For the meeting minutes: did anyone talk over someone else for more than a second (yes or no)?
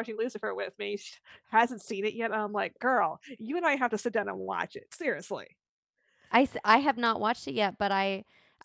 no